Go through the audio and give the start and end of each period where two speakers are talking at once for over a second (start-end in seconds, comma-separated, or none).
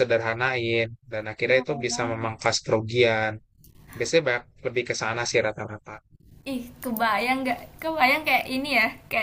none